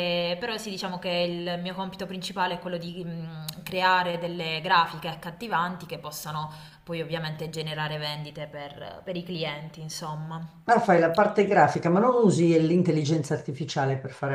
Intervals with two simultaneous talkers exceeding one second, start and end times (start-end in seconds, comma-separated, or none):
none